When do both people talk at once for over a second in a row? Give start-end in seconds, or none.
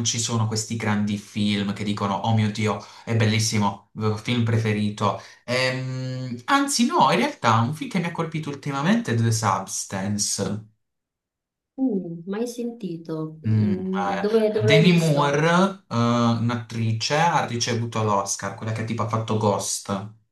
13.5-15.4